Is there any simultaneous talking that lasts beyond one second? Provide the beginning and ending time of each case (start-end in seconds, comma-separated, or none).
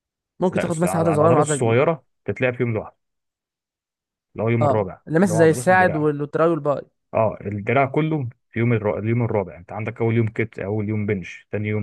0.5-1.9, 4.6-6.1